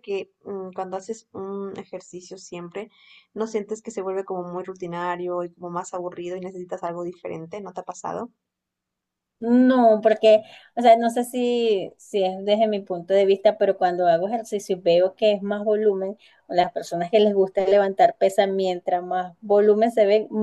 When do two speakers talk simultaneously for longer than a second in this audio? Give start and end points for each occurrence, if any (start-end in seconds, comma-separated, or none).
none